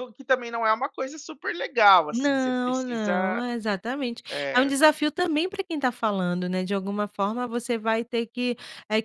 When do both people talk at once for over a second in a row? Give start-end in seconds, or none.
2.1-3.4